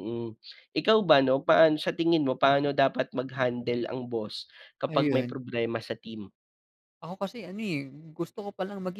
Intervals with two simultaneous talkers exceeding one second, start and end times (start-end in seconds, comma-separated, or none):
none